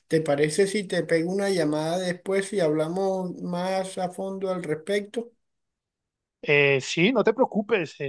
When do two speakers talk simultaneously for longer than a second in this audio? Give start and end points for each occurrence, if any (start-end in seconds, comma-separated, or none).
none